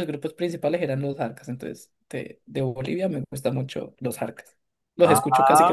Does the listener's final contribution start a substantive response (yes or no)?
yes